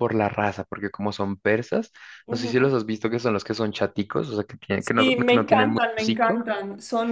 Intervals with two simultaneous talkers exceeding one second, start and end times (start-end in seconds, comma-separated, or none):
4.8-6.5